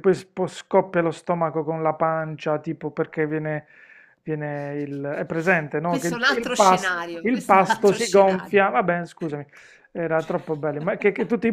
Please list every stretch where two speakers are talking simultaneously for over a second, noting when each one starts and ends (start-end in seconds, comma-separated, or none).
5.8-8.6